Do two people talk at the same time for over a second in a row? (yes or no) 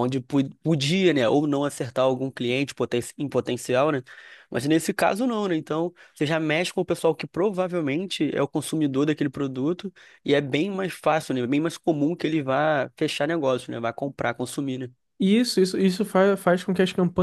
no